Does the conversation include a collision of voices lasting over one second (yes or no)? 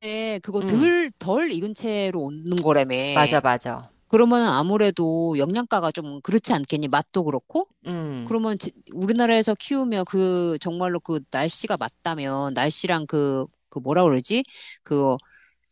no